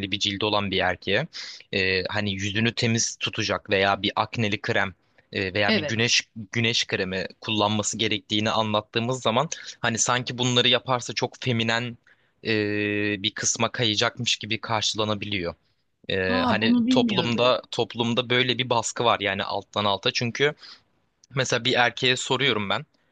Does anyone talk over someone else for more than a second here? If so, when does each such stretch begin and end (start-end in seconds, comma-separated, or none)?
16.3-17.5